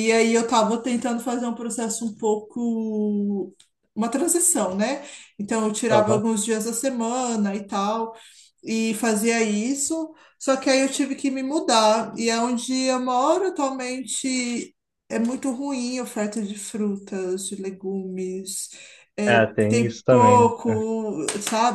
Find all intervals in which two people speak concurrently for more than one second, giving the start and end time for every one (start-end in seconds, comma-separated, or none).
19.3-20.9